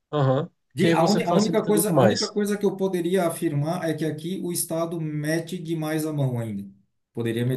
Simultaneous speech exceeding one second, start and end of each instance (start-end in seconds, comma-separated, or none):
0.7-2.4